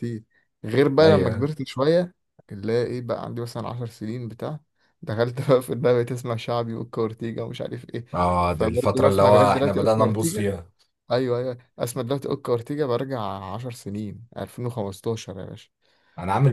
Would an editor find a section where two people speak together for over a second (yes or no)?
yes